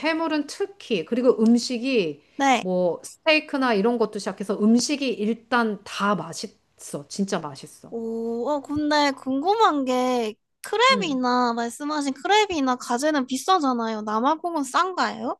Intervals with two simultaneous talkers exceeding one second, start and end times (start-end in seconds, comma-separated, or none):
none